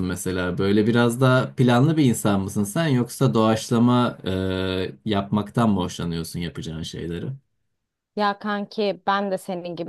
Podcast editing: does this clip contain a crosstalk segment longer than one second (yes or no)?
no